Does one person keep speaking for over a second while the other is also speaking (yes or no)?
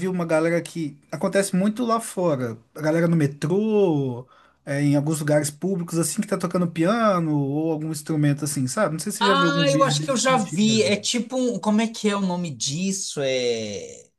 yes